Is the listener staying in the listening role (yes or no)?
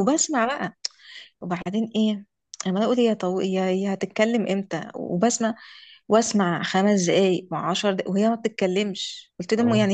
yes